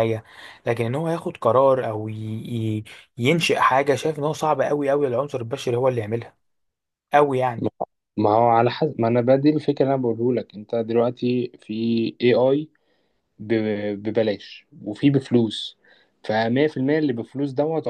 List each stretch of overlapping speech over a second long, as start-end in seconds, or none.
none